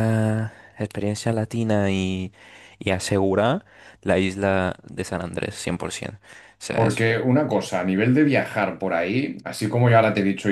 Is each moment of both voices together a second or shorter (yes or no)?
yes